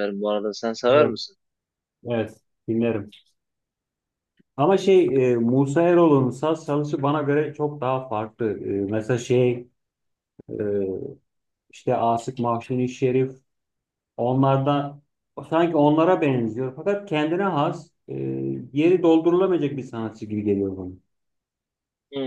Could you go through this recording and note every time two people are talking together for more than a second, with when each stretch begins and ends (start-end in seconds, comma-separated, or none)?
none